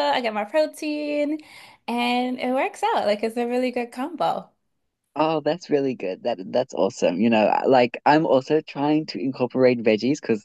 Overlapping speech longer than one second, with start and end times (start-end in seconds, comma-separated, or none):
none